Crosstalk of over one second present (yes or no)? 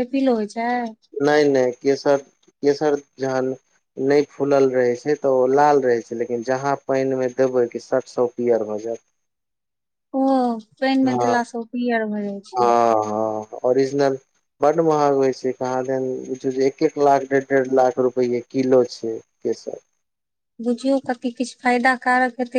no